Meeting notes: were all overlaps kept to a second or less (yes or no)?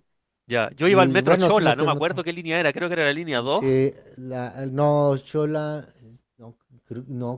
no